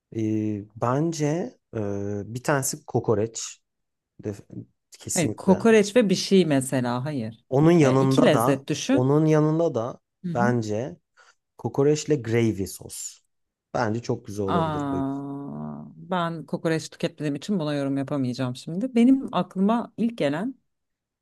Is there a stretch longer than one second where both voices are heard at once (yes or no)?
yes